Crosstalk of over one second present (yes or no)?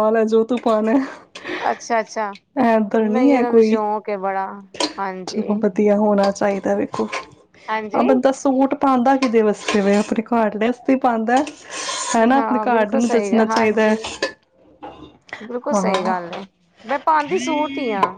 yes